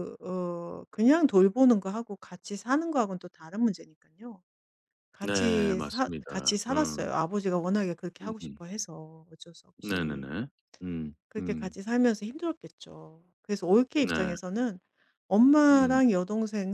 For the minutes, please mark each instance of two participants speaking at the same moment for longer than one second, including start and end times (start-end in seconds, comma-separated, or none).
5.2-7.1